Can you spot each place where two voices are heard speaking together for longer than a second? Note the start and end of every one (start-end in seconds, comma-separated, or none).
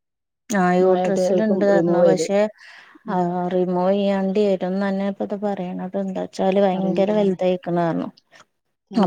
0.8-2.3